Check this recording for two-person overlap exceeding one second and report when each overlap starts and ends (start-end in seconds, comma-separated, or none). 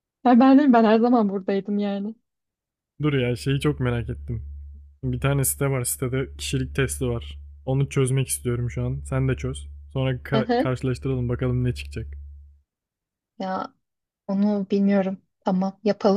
none